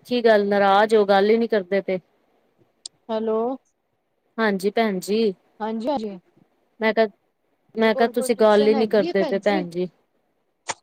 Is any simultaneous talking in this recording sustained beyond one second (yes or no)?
yes